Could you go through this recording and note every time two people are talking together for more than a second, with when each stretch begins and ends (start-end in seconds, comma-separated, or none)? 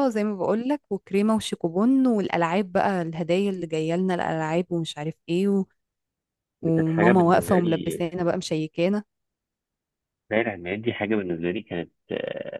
6.6-8.0